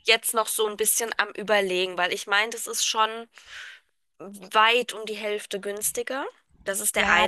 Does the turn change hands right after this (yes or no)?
yes